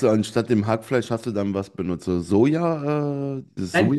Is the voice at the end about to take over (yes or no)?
yes